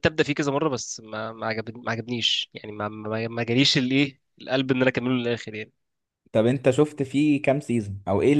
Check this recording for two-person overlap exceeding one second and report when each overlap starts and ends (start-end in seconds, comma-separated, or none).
none